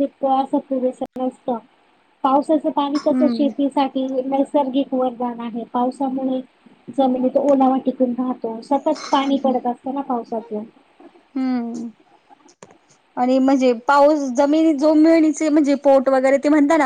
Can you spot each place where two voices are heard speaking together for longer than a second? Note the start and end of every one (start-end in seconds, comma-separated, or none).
none